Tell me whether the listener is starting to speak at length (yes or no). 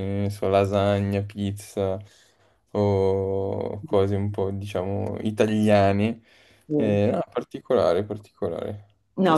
yes